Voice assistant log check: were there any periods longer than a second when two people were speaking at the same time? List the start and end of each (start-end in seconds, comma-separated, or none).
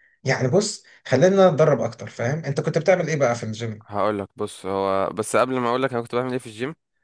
none